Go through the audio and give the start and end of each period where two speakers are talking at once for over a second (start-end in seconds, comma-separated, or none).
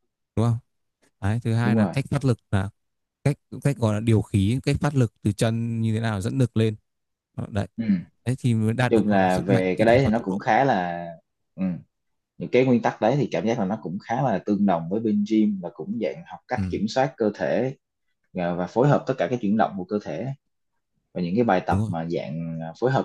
8.9-10.4